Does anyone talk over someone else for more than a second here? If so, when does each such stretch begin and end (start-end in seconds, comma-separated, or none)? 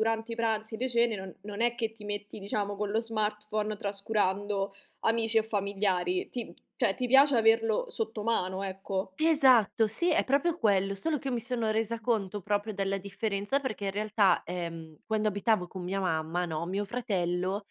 none